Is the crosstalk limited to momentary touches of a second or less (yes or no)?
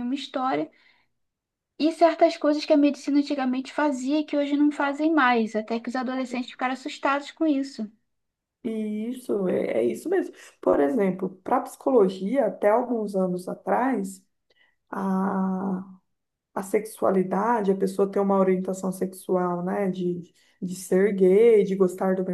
yes